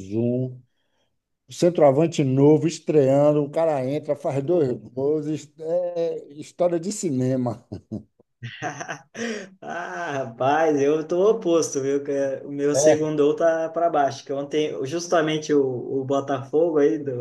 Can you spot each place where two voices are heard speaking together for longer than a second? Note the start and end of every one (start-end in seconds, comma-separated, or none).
none